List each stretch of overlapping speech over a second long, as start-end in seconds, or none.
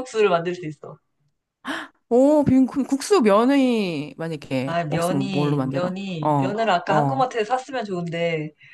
4.6-7.2